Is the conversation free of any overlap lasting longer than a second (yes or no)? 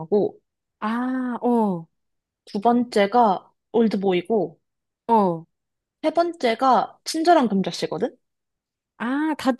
yes